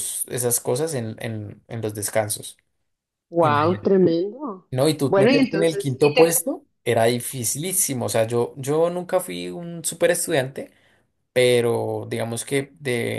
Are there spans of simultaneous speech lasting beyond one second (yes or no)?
yes